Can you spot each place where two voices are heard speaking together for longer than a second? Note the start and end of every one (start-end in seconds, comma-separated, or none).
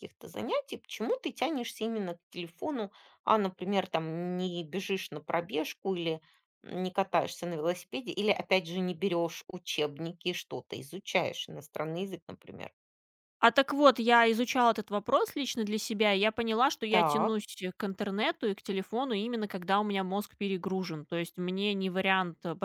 none